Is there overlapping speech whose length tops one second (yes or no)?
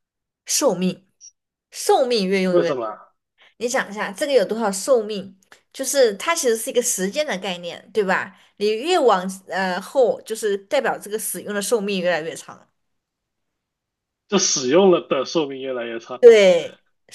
no